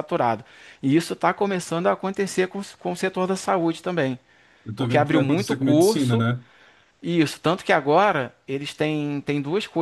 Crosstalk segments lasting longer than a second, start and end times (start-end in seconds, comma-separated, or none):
4.8-6.3